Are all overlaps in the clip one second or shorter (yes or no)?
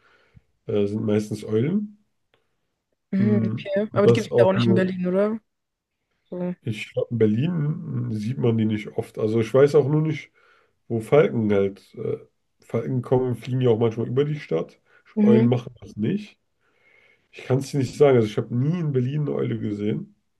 no